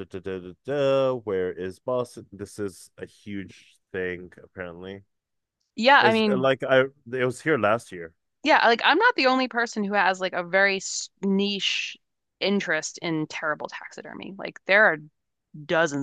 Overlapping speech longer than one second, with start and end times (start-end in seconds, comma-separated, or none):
none